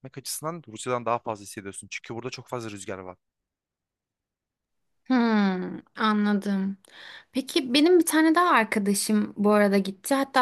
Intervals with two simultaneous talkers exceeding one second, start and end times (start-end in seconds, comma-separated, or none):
none